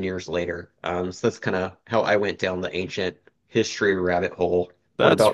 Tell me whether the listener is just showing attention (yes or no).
no